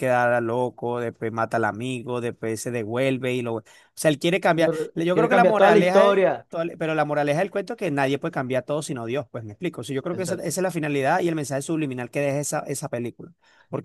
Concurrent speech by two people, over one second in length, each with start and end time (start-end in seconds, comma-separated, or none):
5.1-6.5